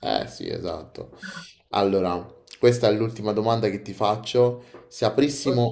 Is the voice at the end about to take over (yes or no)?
no